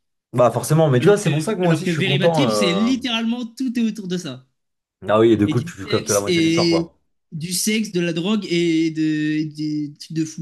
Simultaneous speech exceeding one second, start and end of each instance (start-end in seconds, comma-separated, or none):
1.0-2.9, 5.4-6.9